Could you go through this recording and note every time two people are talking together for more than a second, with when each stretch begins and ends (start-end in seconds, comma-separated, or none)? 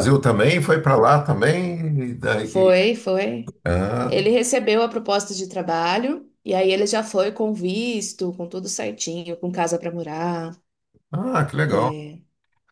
none